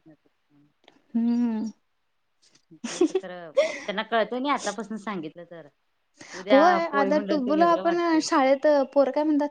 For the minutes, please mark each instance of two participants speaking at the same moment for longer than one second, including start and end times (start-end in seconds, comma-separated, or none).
6.5-8.3